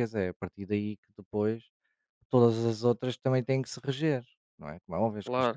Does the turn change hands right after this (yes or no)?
no